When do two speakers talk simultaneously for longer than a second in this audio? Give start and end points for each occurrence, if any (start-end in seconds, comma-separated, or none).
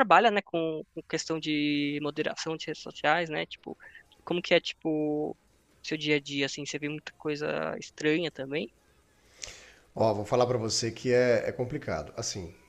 none